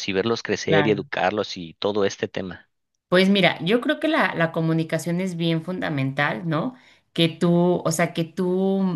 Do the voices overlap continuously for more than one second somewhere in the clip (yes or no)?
no